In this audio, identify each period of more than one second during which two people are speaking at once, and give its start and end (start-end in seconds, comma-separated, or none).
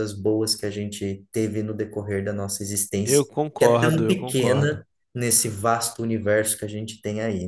3.0-4.8